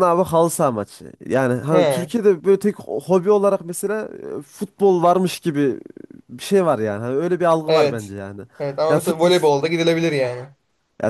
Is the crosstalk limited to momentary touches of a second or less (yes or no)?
yes